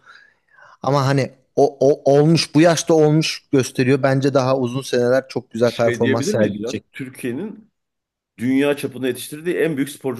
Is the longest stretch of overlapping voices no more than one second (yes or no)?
no